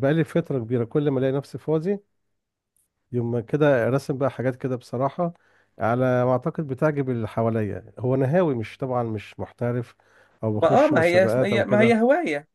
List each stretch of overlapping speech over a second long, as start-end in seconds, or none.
10.6-12.0